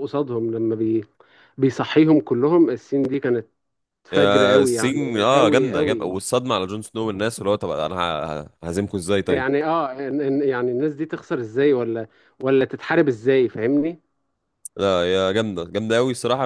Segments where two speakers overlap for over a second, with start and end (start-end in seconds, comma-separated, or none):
4.1-6.2